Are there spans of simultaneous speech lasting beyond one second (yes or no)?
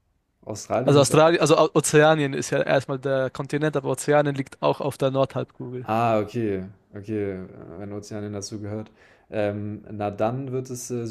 no